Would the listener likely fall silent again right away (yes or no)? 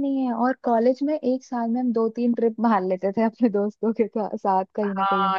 no